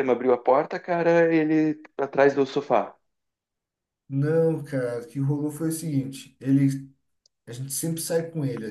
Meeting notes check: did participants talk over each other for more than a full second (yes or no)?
no